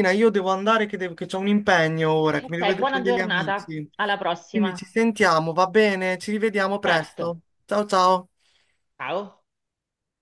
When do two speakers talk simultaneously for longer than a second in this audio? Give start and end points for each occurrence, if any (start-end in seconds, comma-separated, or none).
2.4-3.9